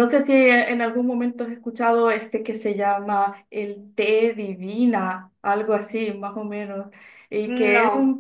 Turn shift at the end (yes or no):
no